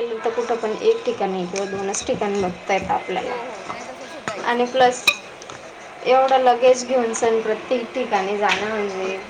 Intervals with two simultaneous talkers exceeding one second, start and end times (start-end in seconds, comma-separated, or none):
none